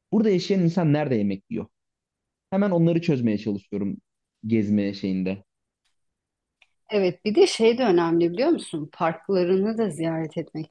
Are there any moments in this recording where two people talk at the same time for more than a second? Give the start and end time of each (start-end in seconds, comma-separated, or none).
none